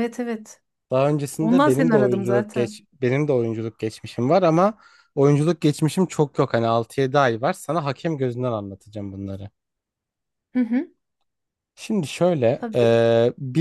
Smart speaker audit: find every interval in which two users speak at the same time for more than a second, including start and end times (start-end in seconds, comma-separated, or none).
1.4-2.8